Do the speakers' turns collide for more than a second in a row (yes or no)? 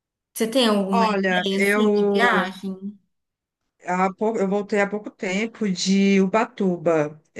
yes